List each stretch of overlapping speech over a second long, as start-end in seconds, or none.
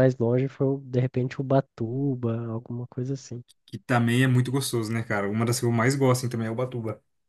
none